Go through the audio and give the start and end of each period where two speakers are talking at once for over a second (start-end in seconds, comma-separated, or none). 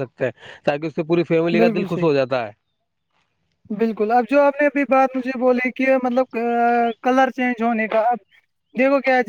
none